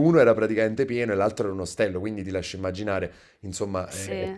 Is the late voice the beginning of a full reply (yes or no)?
no